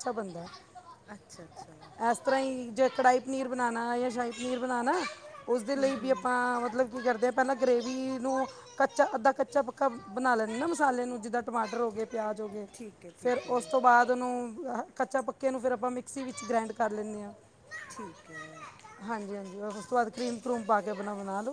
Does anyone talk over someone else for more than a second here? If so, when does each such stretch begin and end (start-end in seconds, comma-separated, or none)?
none